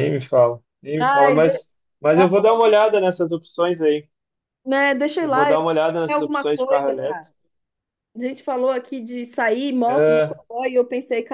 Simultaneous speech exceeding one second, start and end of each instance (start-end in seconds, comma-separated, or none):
5.2-7.3